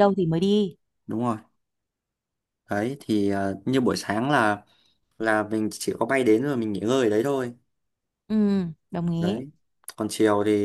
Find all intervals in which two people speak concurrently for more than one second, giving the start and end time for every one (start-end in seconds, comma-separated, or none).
none